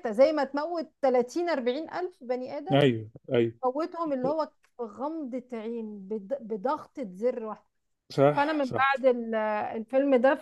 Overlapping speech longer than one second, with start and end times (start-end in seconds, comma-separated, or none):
none